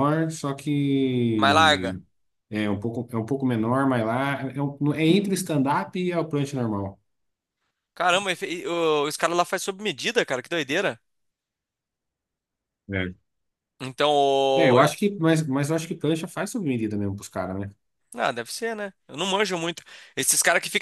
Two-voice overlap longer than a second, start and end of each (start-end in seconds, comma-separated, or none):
none